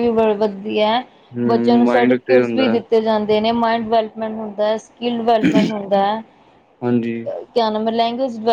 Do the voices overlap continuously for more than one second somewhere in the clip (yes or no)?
yes